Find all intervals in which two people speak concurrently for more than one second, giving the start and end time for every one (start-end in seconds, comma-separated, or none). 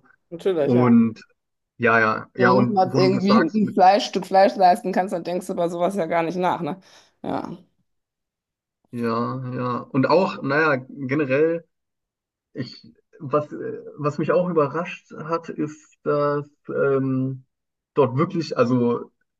2.4-3.8